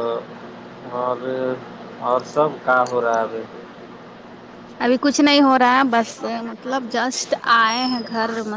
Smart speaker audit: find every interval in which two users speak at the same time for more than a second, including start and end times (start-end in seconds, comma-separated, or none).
none